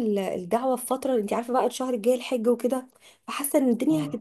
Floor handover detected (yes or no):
no